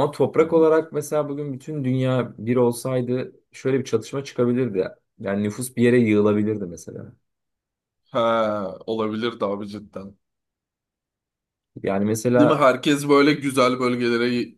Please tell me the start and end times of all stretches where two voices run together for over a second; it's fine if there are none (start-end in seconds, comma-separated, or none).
none